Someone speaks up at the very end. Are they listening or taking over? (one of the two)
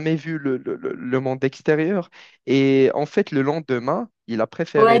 taking over